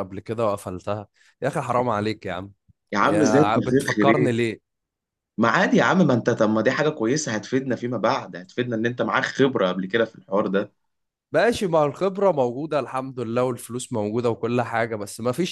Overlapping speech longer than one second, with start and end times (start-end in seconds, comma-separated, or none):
3.0-4.3